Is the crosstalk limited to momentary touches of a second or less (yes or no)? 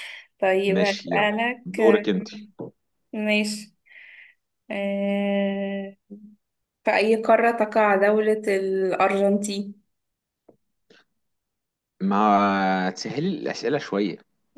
no